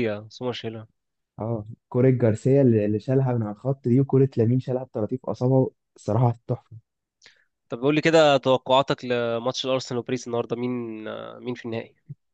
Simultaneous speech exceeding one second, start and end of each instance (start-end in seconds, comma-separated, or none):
none